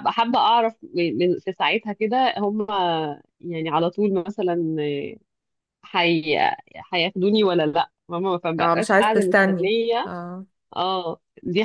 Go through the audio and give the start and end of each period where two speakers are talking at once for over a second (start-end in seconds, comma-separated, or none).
8.6-10.1